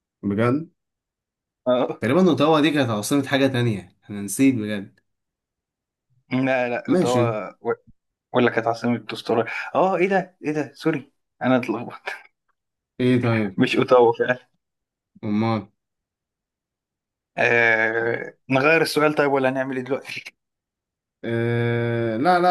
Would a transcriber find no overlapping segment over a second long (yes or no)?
yes